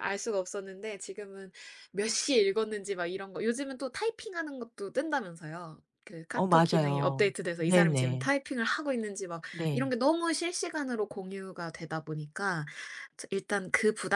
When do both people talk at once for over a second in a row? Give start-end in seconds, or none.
6.3-8.3